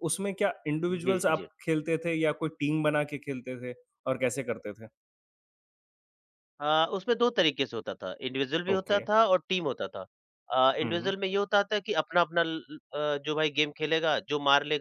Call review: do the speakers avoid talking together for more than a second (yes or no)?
yes